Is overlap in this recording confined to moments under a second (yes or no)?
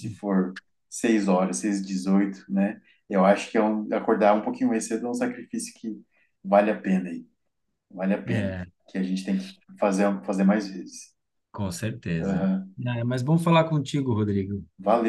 yes